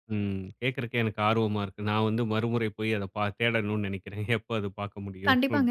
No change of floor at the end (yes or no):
no